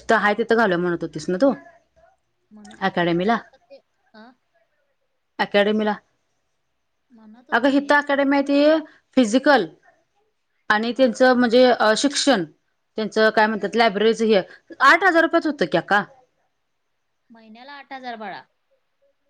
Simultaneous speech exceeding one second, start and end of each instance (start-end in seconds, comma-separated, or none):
none